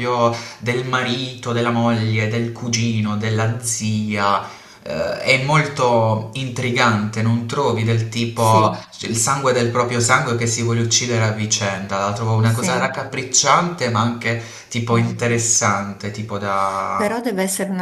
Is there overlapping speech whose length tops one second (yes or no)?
no